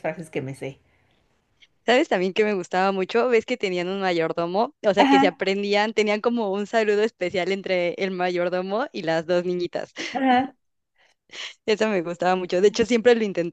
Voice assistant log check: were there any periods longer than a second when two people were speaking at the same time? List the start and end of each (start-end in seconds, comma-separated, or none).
none